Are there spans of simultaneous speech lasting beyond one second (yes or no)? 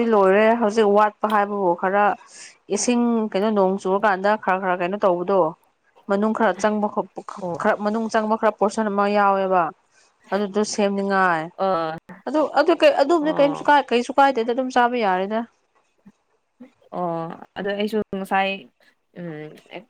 no